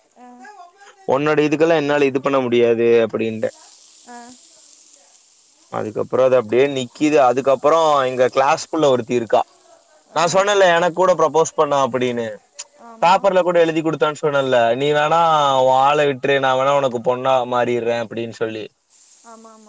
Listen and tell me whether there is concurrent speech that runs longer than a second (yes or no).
yes